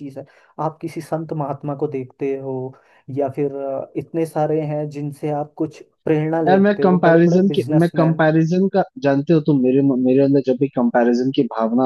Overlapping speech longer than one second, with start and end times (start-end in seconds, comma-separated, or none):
6.5-8.2